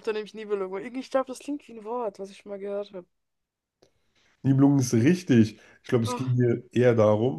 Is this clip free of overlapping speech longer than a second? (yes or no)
yes